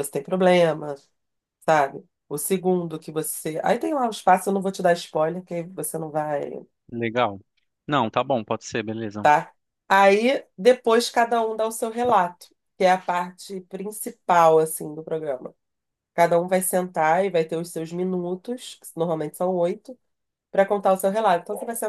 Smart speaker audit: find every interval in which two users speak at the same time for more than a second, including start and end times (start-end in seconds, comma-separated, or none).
none